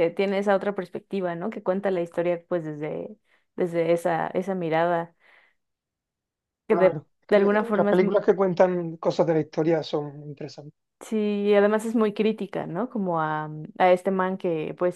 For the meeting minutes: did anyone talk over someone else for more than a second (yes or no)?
yes